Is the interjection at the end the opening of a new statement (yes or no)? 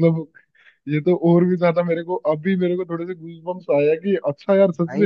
no